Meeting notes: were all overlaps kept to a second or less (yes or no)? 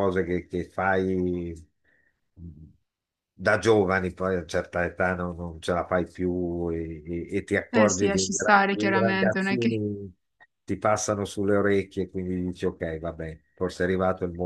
no